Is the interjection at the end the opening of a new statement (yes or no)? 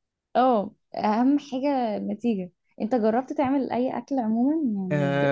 yes